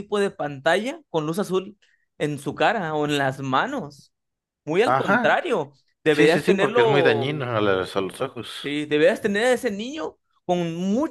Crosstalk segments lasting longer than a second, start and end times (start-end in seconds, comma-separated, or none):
6.1-7.4